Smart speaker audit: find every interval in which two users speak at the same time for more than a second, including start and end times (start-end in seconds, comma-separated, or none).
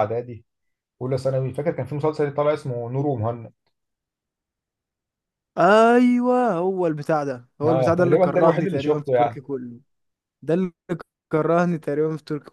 7.7-9.4